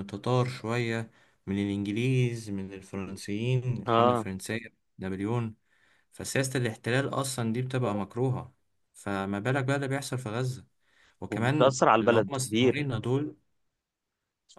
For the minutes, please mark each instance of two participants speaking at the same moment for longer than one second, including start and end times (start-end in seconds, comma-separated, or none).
11.3-12.9